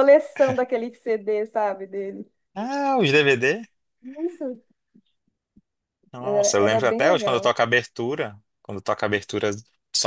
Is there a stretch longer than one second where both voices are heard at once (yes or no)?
yes